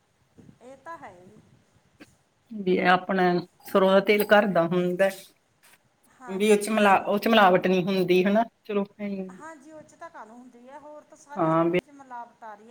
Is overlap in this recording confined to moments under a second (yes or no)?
yes